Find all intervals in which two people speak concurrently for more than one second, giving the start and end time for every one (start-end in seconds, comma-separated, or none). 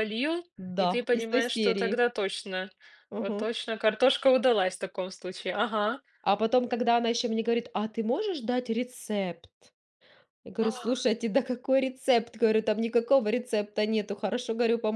0.6-2.0